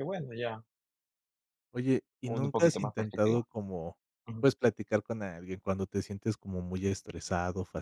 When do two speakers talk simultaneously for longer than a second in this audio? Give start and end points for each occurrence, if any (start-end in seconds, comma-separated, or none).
2.3-3.5